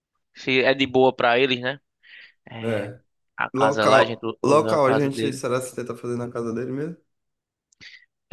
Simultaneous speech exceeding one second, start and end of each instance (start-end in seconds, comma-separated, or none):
3.5-5.4